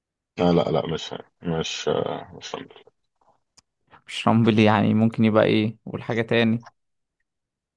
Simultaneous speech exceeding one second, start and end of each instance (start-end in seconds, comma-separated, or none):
none